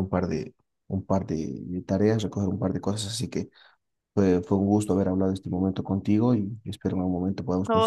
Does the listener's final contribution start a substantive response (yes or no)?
yes